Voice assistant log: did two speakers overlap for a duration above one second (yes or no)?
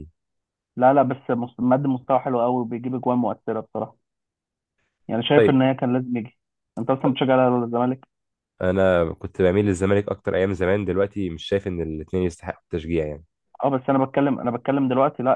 no